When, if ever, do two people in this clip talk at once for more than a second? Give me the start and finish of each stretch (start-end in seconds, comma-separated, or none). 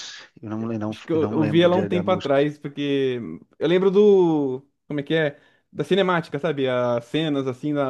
0.9-2.4